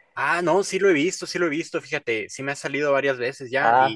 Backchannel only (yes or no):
yes